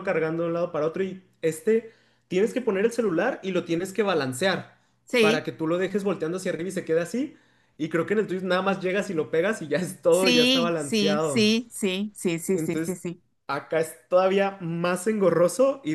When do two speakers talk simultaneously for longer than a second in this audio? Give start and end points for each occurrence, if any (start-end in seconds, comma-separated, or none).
10.1-11.5